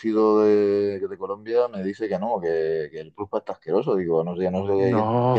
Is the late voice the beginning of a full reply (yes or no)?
no